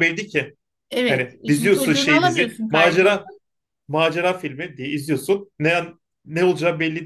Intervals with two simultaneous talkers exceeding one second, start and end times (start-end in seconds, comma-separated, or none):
1.1-3.2